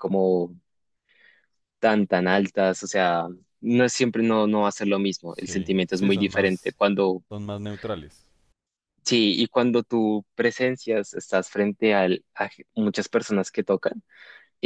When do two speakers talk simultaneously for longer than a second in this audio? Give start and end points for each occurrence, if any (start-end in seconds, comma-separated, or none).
5.3-6.7